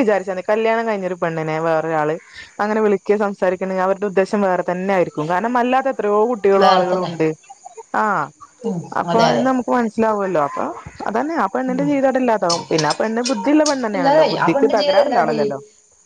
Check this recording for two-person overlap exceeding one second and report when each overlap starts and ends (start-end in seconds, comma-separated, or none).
14.0-15.5